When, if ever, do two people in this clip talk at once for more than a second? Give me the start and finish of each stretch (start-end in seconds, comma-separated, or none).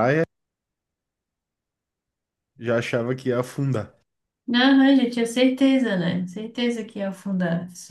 none